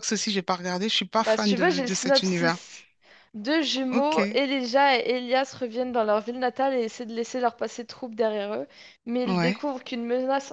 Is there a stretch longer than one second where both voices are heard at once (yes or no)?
yes